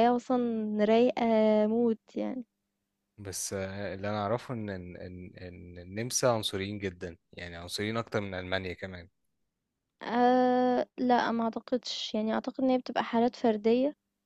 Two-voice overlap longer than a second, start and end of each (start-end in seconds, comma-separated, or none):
none